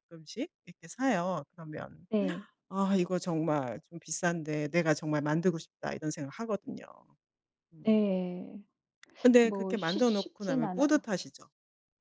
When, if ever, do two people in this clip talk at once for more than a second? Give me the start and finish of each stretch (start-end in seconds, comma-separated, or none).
9.4-11.0